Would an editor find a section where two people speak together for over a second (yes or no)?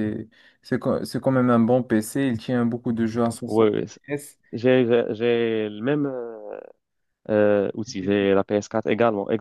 no